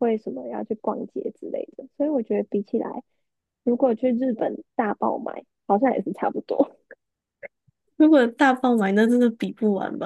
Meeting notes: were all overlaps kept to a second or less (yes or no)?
yes